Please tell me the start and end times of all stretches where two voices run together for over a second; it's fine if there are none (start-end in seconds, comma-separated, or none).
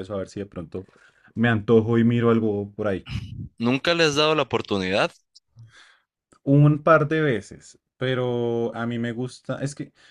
none